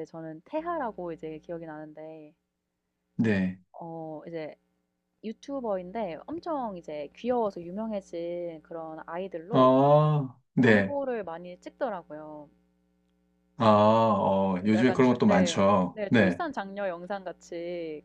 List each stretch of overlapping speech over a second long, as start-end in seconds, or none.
14.6-16.4